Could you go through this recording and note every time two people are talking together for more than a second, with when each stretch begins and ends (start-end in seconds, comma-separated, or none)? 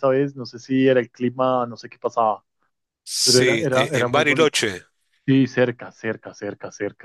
3.2-4.5